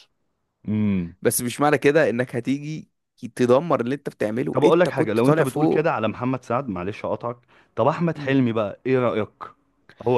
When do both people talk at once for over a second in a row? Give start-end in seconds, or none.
4.5-5.8